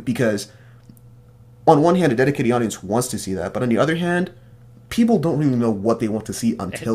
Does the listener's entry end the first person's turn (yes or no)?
yes